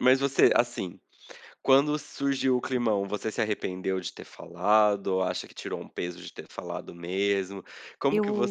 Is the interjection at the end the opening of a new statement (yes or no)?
no